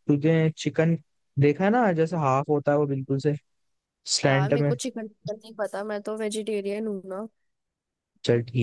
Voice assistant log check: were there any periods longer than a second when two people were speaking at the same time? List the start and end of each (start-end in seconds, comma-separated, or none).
none